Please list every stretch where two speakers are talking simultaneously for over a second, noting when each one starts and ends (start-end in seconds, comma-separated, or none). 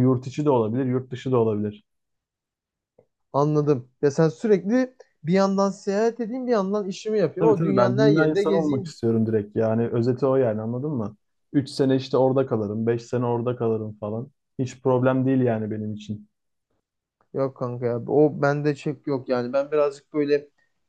7.4-8.9